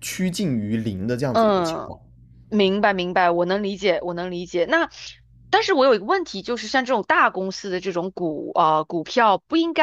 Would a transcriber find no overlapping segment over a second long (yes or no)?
yes